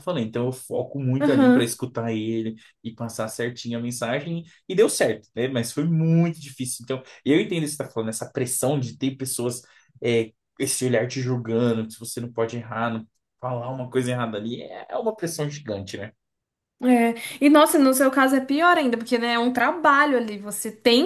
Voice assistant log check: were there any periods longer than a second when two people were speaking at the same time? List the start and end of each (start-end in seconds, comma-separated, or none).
none